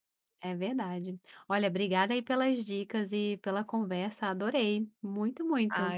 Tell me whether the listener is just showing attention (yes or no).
no